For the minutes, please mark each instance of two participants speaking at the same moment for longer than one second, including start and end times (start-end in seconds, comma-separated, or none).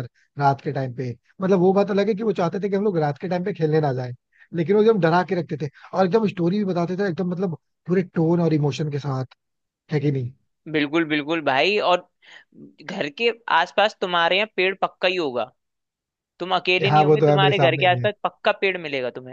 16.8-18.1